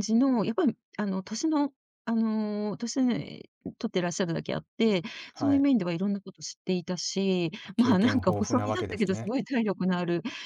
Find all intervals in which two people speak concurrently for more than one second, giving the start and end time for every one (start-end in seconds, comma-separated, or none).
7.6-9.3